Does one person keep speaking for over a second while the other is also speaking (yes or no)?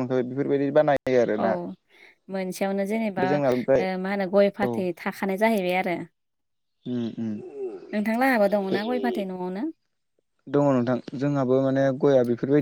no